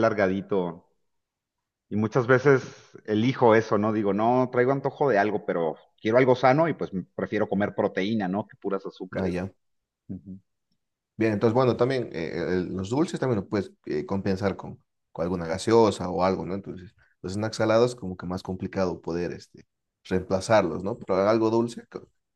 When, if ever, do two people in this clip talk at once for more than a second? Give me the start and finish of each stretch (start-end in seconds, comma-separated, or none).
none